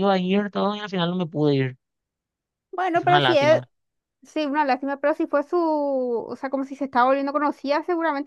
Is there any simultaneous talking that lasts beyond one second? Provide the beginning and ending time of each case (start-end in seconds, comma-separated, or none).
none